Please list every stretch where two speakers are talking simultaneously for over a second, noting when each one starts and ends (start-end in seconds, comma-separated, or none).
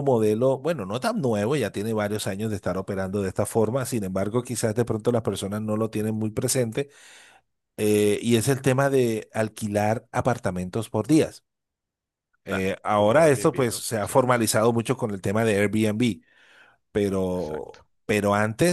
12.5-14.1